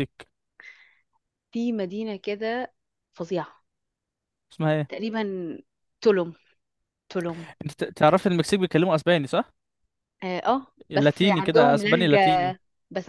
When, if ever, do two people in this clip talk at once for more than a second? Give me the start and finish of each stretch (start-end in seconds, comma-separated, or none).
10.9-12.6